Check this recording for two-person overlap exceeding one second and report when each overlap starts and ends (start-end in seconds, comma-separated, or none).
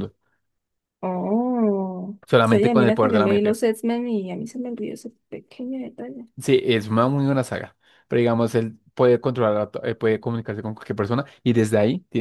2.3-3.6